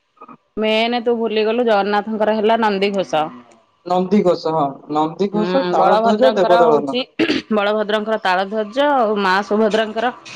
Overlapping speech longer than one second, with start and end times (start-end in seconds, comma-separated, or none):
5.4-6.9